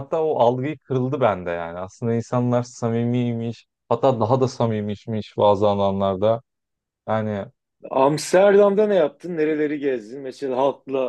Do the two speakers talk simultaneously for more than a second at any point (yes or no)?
no